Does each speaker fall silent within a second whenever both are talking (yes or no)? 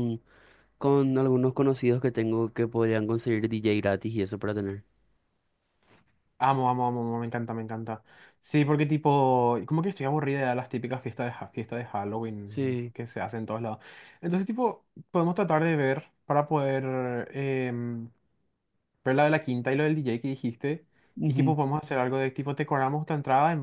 yes